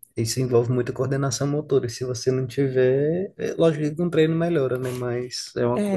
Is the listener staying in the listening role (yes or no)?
no